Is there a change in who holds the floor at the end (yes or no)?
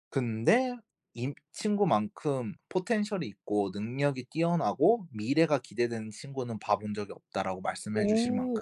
yes